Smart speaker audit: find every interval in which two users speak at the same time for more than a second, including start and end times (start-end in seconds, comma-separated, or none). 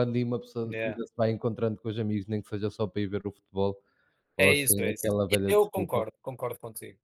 4.4-6.0